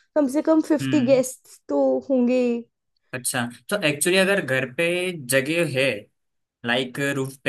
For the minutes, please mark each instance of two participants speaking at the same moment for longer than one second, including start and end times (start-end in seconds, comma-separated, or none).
none